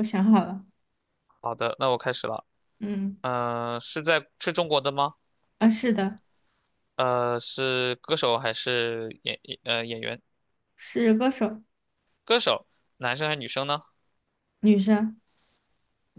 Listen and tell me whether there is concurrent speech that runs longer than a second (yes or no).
no